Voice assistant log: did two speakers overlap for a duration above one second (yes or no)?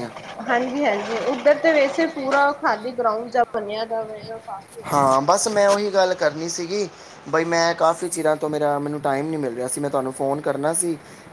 no